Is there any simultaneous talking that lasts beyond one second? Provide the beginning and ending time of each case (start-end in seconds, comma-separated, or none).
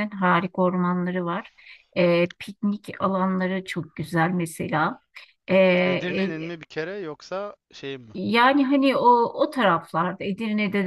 none